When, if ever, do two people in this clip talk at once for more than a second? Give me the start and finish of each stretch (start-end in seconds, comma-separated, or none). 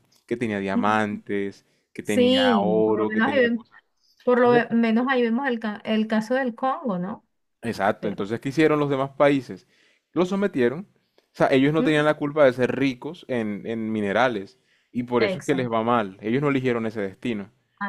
2.0-3.6